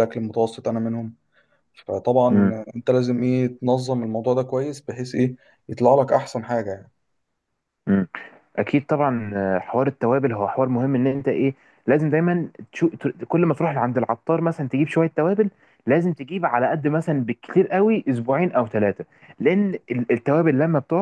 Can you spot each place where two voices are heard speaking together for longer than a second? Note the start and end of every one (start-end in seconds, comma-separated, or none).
none